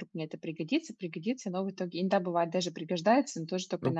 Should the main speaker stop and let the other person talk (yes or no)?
yes